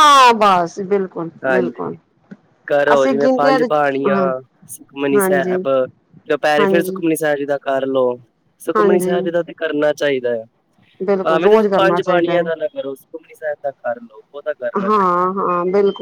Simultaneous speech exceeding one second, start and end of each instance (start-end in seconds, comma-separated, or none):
11.2-12.4